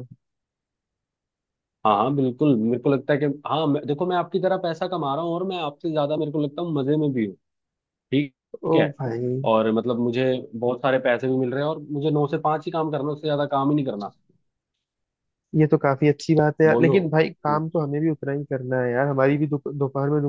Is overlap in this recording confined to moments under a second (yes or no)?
yes